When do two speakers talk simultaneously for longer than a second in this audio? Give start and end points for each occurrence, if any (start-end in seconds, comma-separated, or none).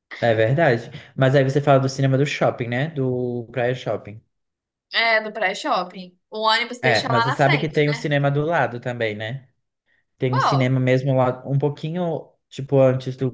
6.8-8.1